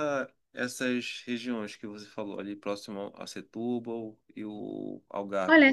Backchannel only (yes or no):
no